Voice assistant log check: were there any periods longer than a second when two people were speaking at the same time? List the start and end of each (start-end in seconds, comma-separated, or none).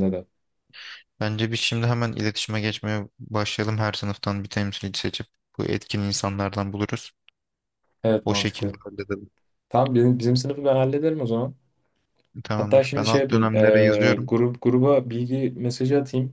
12.6-14.3